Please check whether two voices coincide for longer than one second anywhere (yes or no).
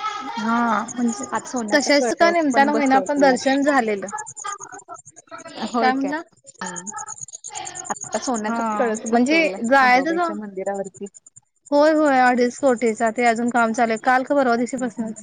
yes